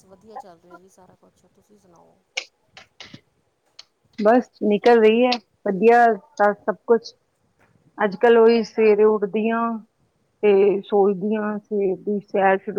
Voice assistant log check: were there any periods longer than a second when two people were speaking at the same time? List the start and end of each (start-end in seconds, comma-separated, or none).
none